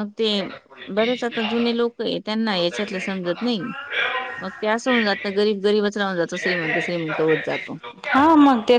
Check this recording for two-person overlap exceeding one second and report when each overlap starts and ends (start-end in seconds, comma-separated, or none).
none